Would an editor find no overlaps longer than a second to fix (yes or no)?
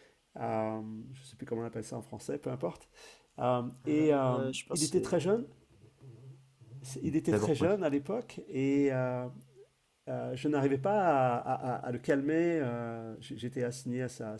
no